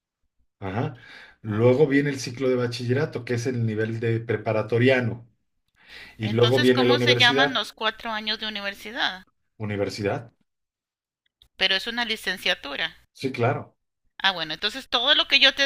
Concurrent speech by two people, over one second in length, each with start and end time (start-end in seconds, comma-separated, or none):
6.2-7.7